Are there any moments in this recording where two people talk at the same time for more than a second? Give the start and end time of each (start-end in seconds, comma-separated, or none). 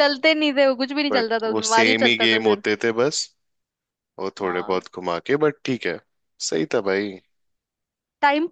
1.1-2.6